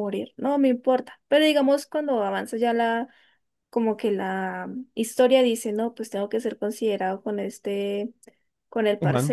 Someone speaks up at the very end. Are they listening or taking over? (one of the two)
listening